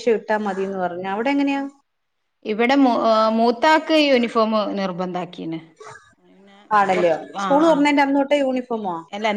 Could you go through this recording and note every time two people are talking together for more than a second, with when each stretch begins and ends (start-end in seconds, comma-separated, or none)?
none